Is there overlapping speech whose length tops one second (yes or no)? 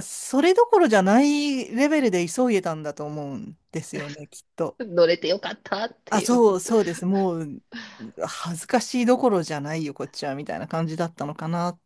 no